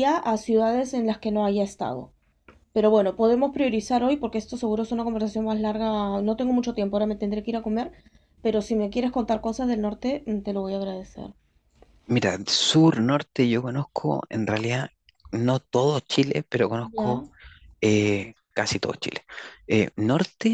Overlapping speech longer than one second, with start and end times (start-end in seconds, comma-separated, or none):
none